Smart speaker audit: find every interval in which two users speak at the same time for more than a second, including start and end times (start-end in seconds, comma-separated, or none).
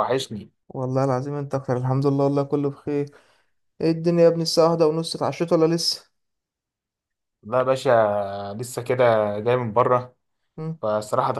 none